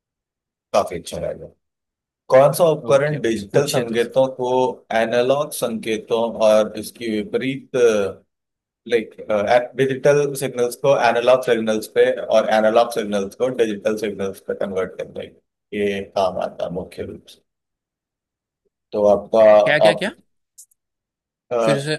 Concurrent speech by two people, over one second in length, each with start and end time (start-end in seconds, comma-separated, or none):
2.9-4.1